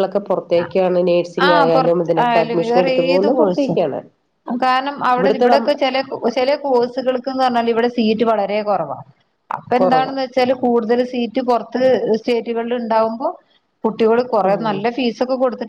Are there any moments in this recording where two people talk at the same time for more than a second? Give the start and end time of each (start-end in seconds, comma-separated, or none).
1.5-3.8